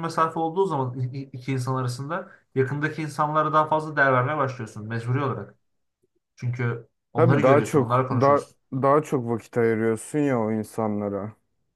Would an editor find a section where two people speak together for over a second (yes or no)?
yes